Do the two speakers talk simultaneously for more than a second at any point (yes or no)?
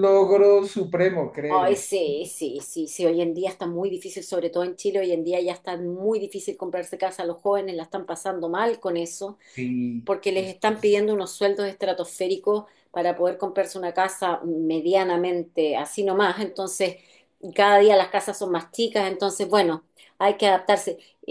no